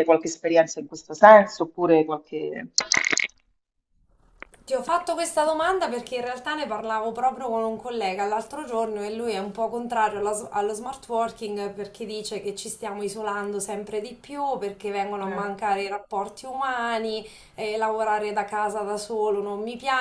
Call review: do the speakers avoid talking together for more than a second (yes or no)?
yes